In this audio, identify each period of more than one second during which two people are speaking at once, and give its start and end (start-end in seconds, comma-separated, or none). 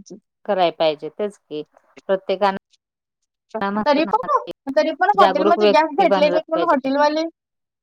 5.2-6.7